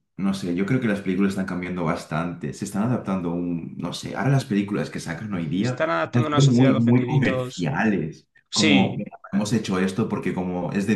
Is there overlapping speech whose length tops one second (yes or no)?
yes